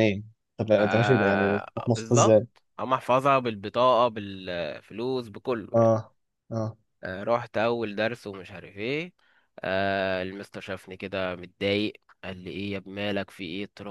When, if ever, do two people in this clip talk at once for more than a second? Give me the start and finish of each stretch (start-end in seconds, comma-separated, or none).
0.8-2.4